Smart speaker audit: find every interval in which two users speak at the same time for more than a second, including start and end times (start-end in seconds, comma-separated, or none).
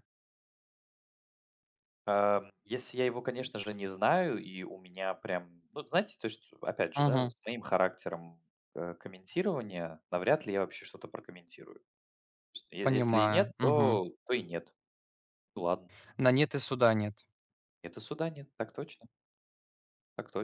12.8-14.0